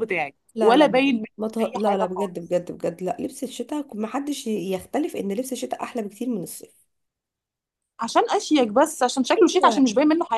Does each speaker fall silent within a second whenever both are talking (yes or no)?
no